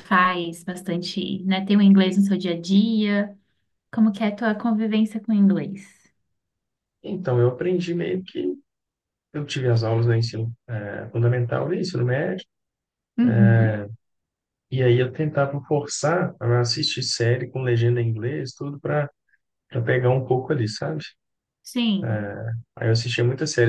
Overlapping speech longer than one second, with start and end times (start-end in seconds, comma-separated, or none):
none